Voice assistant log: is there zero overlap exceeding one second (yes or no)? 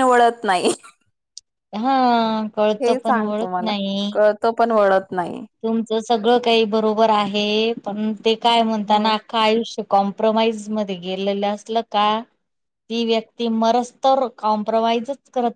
yes